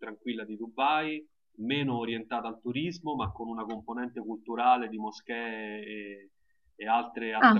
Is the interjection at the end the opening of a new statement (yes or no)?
no